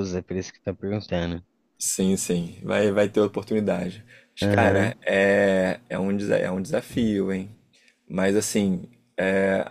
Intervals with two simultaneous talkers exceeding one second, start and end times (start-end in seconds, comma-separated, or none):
none